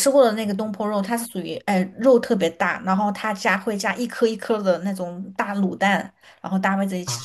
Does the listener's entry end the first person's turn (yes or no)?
no